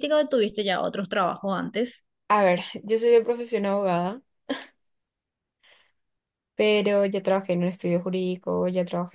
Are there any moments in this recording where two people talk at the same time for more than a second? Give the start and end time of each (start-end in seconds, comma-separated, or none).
none